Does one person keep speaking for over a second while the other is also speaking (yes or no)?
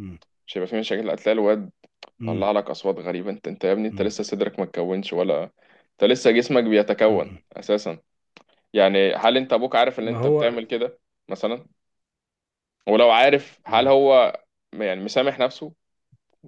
no